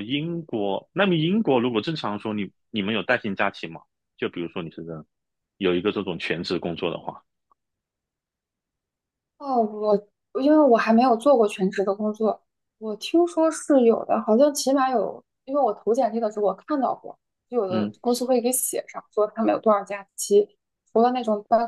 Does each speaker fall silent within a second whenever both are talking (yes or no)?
yes